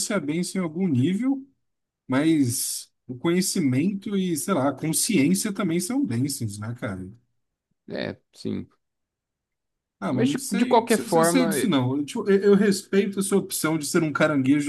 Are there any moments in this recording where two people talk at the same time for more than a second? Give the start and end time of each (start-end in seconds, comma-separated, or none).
10.1-11.5